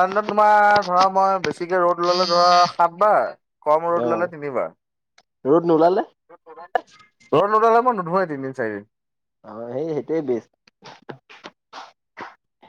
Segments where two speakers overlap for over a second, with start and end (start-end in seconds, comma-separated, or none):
none